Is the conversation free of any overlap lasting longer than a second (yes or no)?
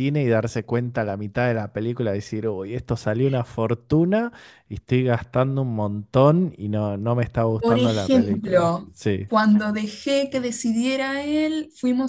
no